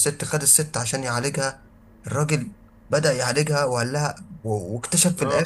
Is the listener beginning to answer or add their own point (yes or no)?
no